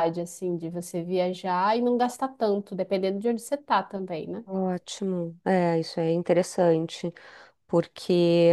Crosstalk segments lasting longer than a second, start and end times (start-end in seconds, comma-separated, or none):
none